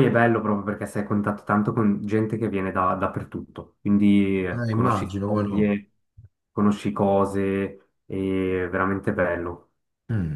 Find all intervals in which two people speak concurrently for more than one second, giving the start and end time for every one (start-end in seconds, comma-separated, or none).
4.5-5.8